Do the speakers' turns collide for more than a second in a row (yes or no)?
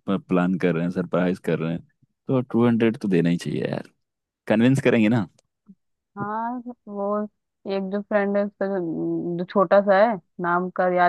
no